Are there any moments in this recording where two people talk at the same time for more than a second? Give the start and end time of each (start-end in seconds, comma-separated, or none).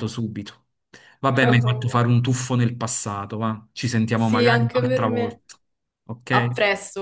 4.1-5.4